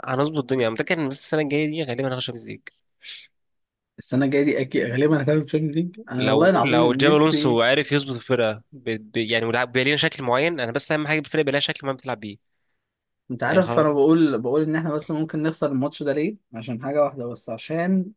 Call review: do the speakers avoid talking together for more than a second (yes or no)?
no